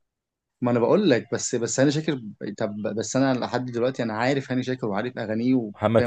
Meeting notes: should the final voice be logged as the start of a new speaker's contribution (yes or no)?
yes